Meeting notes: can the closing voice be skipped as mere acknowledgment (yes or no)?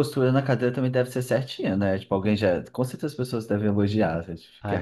no